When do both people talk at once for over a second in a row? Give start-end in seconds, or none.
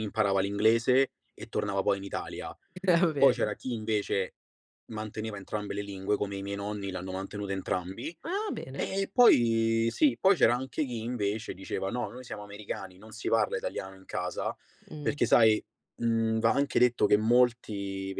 none